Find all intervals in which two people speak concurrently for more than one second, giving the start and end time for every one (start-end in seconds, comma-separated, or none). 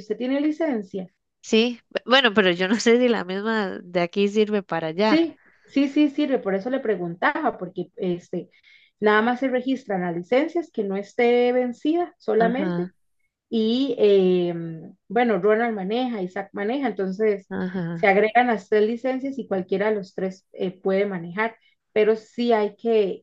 none